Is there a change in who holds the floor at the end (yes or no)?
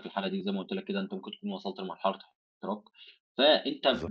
no